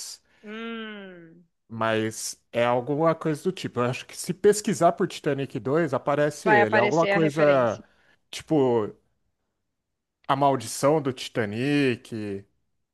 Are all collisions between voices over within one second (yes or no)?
no